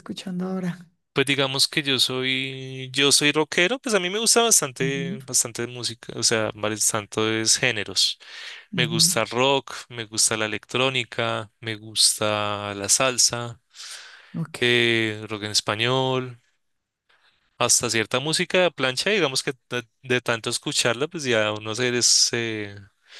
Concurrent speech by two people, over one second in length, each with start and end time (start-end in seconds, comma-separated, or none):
none